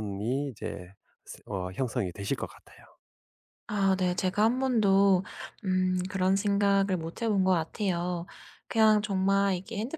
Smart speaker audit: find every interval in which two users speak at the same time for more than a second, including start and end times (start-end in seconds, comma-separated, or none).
none